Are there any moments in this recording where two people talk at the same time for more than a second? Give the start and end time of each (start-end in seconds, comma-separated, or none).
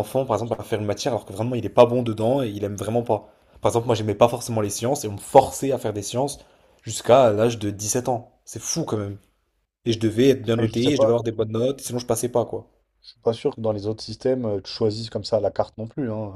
none